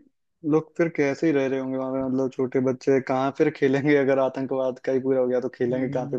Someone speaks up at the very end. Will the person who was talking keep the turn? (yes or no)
no